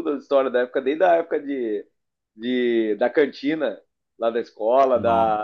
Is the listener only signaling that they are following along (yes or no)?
yes